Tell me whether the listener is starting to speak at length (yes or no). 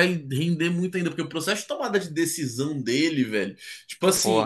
no